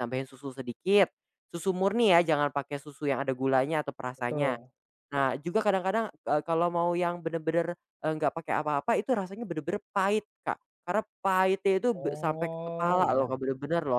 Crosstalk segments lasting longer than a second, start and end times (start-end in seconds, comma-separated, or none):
11.9-13.4